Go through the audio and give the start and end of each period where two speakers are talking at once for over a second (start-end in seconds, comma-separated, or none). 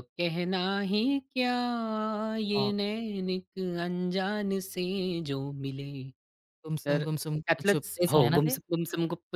6.8-8.6